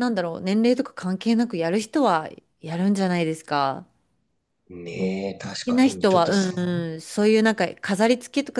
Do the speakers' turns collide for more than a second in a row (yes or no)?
yes